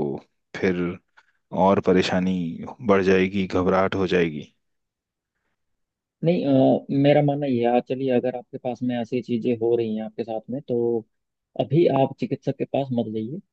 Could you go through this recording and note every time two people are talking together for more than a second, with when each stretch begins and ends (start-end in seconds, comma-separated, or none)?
none